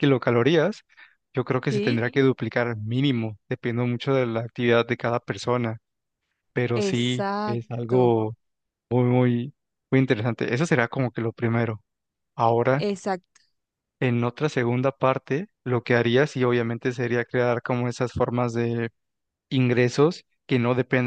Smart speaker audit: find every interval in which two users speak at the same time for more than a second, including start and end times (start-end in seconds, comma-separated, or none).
6.7-8.1